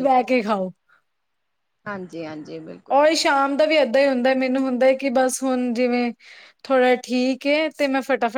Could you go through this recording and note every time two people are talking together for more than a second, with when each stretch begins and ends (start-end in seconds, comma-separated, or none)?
none